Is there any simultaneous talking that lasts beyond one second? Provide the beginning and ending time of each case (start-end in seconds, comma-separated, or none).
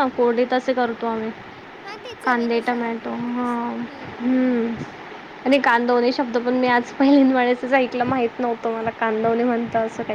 2.2-3.5